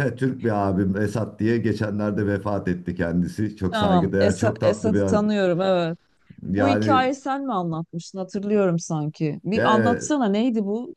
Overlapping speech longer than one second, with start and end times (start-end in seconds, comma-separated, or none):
3.7-5.3